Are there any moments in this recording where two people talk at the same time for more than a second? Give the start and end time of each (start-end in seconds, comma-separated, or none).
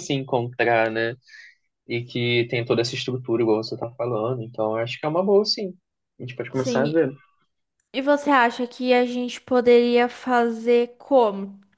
none